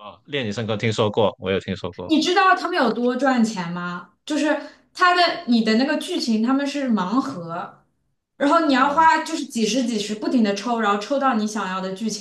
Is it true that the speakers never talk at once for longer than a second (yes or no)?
yes